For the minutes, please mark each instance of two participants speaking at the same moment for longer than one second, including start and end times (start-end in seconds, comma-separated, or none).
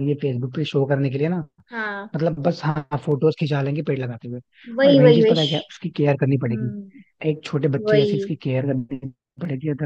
none